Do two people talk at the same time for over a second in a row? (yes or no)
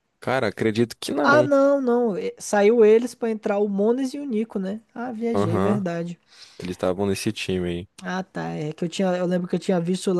no